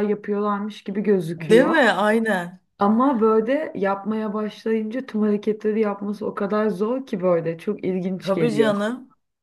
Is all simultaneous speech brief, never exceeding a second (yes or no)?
yes